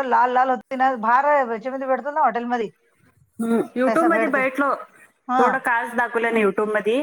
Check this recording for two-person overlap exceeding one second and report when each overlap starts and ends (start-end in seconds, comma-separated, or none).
none